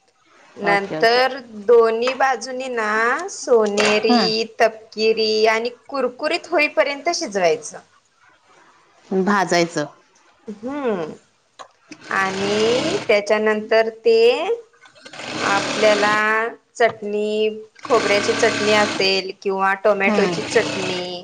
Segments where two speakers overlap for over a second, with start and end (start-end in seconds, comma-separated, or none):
none